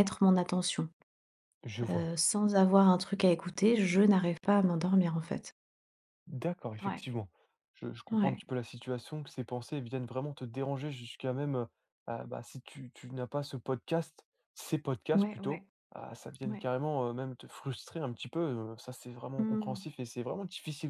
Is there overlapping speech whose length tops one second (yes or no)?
no